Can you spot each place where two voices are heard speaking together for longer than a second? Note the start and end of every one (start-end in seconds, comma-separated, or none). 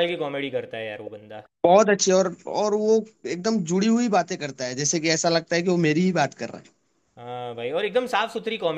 none